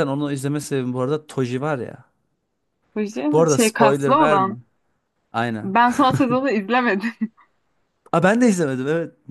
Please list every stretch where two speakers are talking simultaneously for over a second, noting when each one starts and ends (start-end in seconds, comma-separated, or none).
3.3-4.5